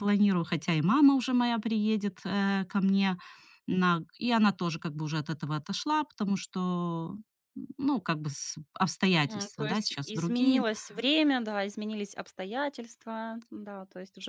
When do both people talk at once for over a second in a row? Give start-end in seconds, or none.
9.2-10.6